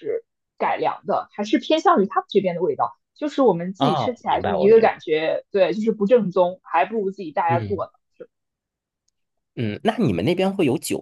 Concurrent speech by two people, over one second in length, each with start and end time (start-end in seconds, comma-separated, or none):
3.8-5.1